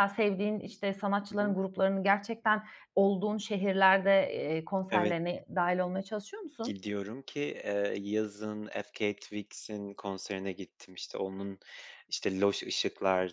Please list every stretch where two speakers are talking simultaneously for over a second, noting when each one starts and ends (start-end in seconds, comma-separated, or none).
none